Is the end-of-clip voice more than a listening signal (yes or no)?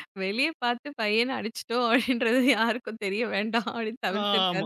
yes